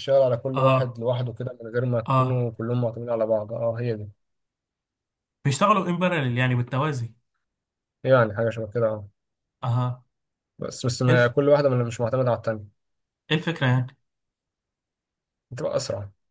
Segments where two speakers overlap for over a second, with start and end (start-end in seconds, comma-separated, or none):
none